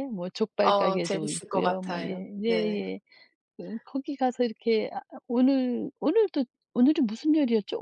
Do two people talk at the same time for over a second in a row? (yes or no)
yes